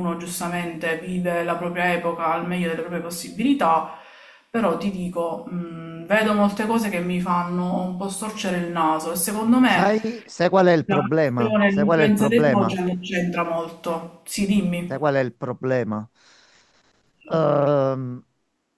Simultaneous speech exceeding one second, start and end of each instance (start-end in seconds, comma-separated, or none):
10.9-12.8